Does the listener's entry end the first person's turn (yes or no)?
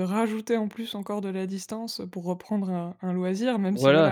yes